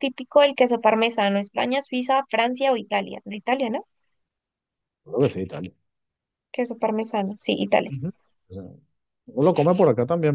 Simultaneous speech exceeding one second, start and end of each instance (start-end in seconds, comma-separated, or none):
none